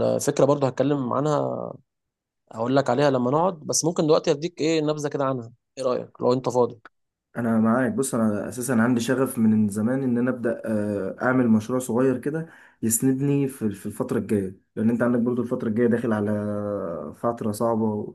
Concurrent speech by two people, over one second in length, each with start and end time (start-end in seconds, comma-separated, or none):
none